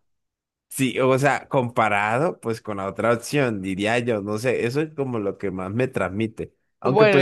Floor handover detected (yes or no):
no